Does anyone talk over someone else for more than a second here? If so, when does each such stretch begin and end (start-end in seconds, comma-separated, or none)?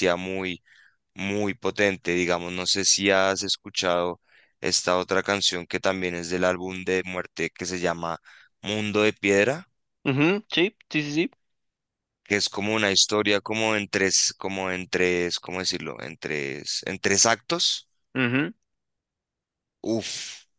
none